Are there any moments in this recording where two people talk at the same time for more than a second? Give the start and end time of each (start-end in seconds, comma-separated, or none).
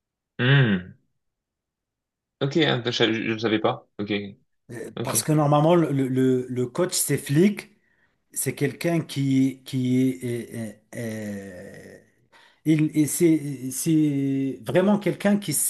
none